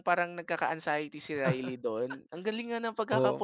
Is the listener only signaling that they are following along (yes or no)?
no